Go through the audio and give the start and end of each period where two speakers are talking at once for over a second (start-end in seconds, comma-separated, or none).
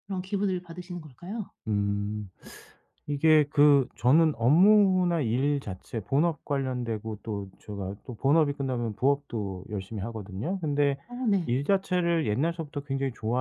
none